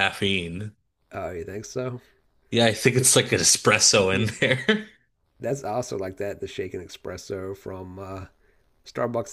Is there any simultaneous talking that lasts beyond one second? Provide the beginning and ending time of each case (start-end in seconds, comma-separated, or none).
none